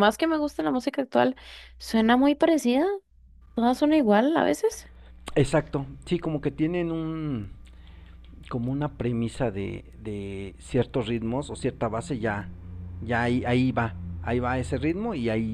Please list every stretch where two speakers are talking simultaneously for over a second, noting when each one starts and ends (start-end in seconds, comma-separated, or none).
none